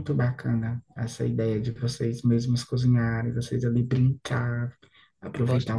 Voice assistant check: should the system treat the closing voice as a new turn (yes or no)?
no